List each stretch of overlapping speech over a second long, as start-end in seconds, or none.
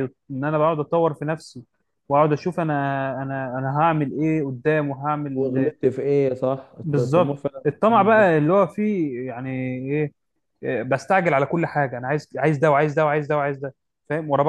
6.8-8.3